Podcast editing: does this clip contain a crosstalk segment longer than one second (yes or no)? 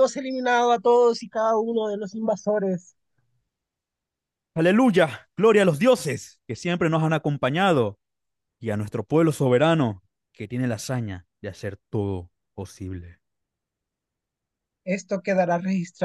no